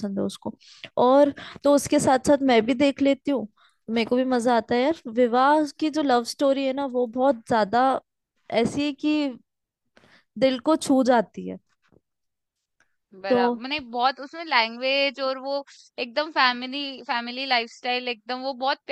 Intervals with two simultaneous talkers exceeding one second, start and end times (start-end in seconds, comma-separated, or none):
none